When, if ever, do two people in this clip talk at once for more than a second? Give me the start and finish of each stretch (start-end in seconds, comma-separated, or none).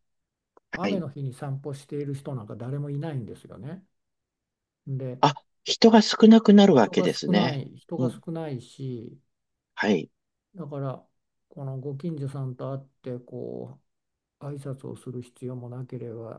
6.7-8.2